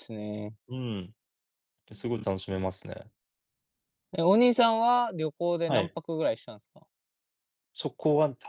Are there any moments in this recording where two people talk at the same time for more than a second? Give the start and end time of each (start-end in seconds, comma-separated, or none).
none